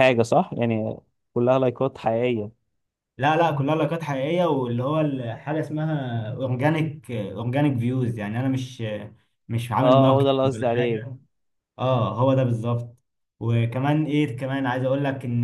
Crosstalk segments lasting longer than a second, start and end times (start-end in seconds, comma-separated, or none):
9.8-11.1